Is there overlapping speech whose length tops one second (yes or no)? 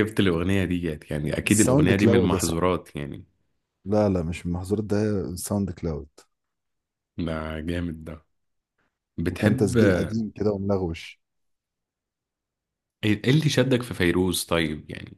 yes